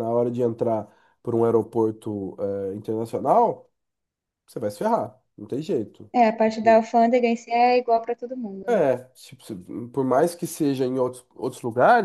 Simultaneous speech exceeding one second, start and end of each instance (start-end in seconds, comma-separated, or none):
none